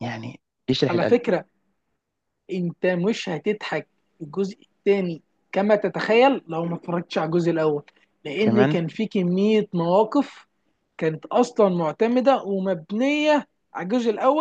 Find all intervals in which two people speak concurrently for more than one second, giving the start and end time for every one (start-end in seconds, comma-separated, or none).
none